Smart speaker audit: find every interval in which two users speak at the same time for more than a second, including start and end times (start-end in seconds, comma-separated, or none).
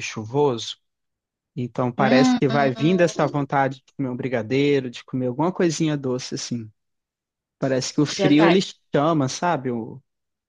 2.0-3.2